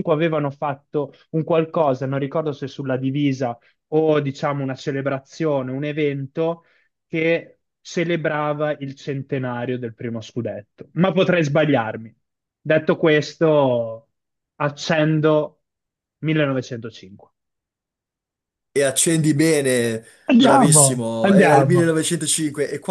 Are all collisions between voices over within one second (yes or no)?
no